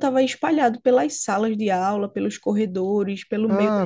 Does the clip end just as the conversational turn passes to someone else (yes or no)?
yes